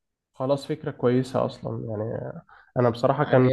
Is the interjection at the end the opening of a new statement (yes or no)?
no